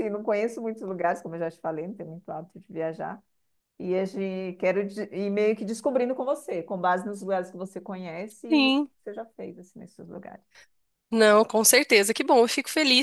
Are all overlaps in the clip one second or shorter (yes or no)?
yes